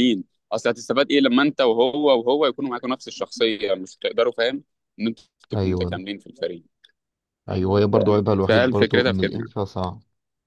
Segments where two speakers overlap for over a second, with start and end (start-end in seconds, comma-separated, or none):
7.9-9.4